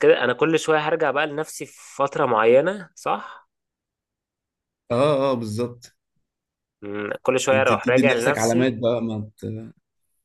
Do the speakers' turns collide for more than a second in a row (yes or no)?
yes